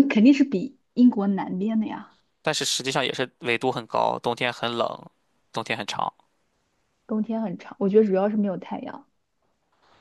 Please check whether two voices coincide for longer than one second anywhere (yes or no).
no